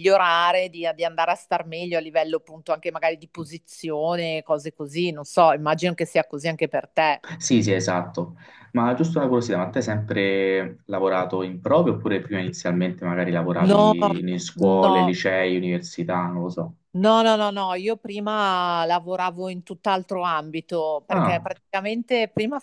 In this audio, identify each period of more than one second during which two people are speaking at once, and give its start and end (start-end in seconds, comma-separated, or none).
none